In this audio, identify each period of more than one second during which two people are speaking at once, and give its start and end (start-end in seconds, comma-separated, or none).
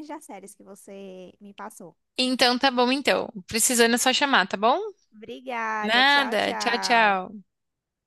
5.8-7.2